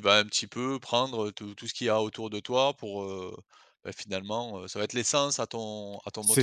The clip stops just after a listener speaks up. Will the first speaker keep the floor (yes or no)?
no